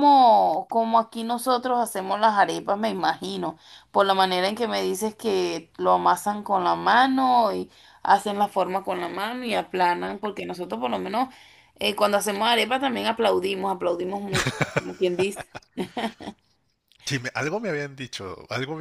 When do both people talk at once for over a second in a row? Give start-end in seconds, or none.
none